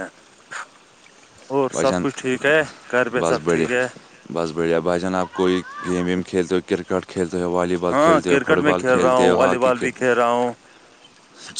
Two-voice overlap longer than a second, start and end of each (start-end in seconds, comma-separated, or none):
7.9-9.9